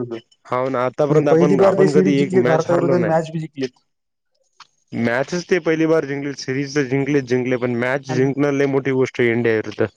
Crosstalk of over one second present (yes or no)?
yes